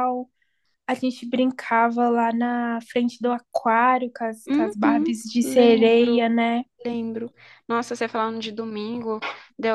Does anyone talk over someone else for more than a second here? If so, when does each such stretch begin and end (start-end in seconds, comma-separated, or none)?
4.5-6.2